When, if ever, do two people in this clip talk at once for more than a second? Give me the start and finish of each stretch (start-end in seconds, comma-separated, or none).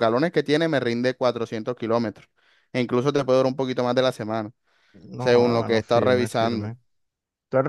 5.2-6.7